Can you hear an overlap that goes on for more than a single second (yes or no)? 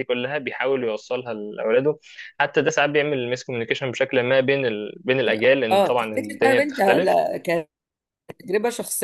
yes